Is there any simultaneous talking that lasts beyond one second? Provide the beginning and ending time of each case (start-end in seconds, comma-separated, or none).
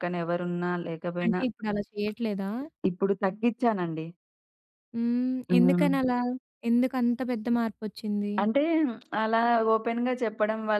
none